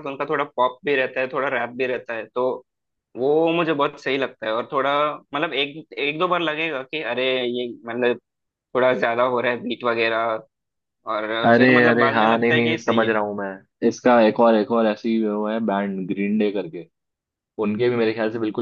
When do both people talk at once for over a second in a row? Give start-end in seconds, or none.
11.4-13.1